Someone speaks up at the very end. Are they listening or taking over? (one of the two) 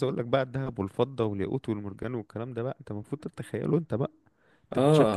taking over